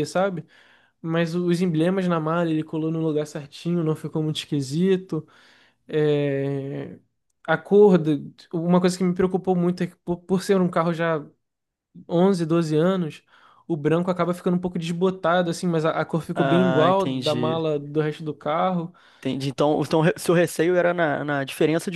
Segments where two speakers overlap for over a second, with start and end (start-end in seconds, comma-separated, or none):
16.3-17.6